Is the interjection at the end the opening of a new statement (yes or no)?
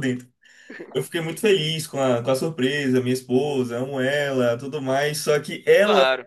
no